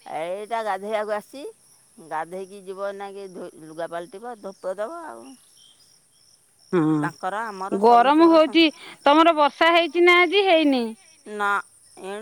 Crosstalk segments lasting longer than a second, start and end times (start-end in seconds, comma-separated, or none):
7.0-8.6